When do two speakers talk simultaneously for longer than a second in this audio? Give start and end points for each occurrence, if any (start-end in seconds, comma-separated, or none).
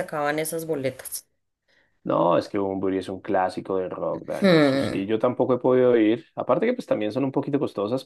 none